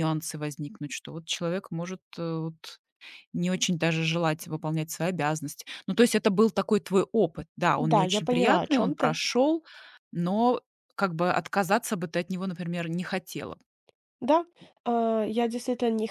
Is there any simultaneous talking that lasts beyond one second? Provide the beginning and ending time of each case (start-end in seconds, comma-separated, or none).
7.8-9.2